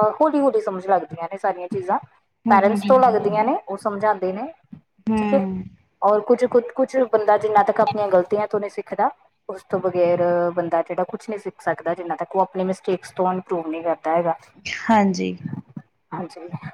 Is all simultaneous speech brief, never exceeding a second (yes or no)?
yes